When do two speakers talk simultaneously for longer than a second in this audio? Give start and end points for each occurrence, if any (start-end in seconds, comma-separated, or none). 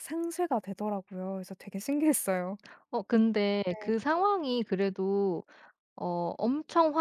none